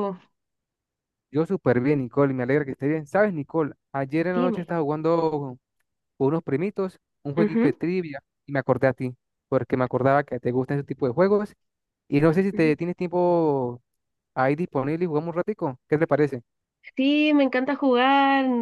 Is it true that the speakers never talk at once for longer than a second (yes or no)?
yes